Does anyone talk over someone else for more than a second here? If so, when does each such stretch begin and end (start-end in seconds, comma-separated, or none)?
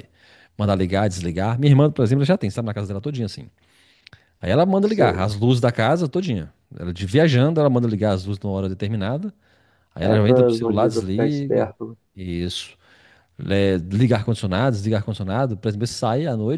10.0-11.7